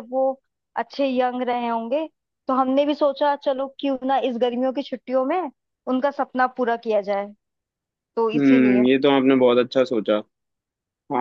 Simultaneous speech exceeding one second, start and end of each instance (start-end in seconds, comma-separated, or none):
none